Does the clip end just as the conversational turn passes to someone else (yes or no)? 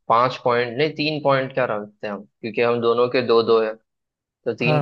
no